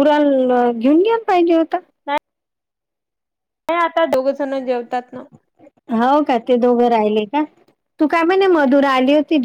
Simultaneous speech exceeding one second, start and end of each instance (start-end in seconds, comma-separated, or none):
none